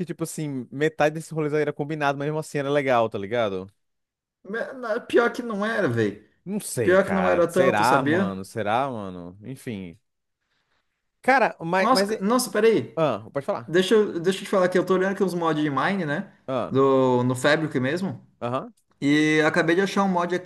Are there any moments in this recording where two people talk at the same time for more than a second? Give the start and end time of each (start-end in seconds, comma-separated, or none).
6.8-8.4